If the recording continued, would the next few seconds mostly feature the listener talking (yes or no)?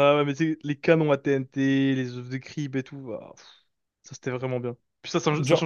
no